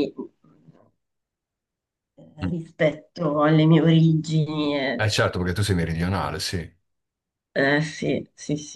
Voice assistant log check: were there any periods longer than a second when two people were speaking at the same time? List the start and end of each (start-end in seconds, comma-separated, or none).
none